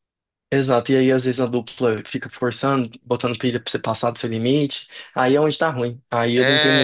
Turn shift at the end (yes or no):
yes